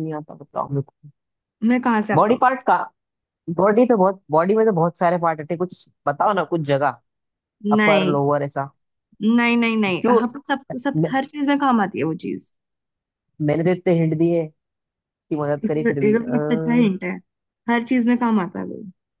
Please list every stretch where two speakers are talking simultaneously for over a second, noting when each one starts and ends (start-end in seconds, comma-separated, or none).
15.6-16.9